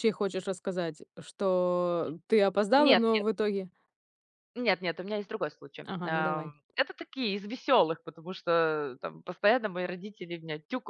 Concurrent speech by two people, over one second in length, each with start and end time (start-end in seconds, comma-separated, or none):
none